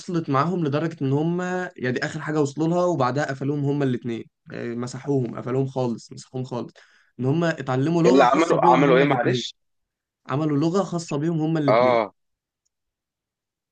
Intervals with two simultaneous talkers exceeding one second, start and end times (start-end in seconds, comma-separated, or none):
8.1-9.4